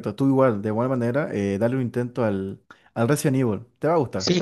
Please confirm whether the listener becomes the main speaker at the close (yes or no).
yes